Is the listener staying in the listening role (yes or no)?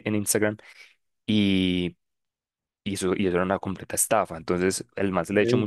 yes